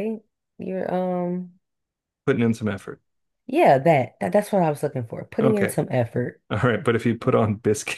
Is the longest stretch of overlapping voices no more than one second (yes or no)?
yes